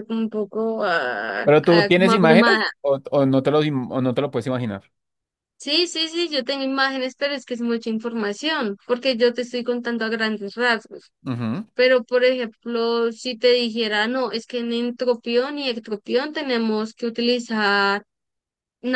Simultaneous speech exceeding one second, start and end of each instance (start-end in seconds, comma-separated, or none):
1.4-2.6